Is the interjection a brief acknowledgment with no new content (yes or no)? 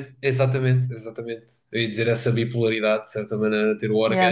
yes